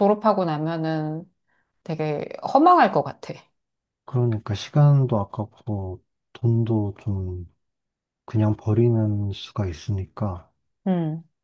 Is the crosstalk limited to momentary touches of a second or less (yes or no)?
yes